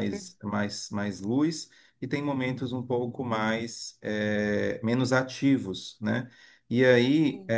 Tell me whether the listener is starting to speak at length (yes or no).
no